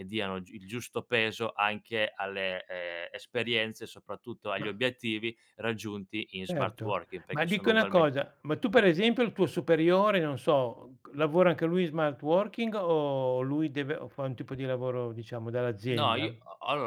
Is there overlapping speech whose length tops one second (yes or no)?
yes